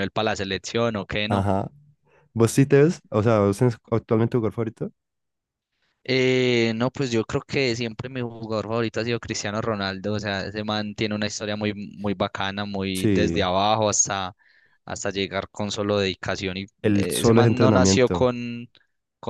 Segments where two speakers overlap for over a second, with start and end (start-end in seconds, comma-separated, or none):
16.8-18.3